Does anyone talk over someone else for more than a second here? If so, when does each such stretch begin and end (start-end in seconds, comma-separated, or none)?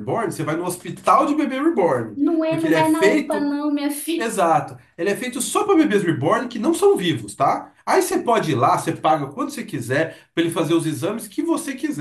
2.2-3.6